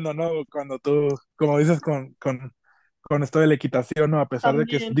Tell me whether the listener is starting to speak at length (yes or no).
no